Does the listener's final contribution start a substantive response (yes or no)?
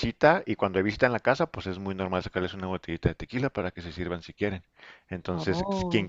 no